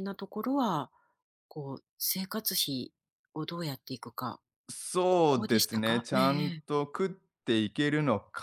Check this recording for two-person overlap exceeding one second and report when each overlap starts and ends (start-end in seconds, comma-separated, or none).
5.1-6.6